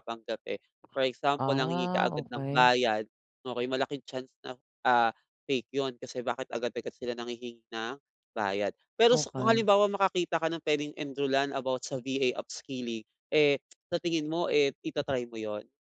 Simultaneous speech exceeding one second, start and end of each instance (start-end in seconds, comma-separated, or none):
1.4-2.7